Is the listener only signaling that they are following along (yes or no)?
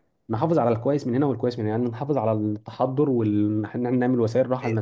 yes